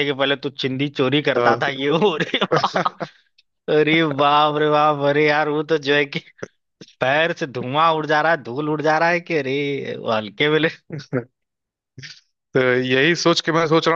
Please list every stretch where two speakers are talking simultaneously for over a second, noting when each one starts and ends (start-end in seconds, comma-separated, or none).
none